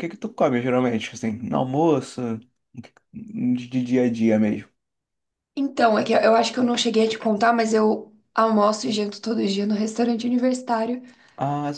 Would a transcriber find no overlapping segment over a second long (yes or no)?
yes